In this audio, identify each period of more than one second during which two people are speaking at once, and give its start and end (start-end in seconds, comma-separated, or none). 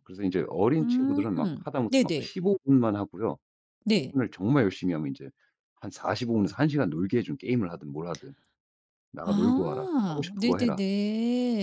9.2-10.8